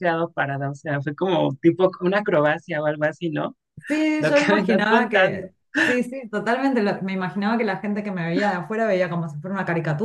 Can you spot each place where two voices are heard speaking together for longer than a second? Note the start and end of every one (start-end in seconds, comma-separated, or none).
4.2-5.5